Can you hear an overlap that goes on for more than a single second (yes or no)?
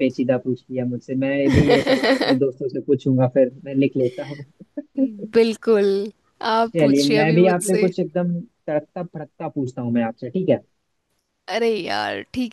yes